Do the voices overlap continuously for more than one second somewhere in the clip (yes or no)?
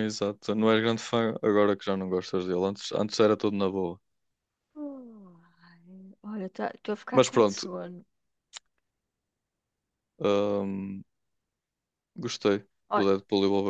no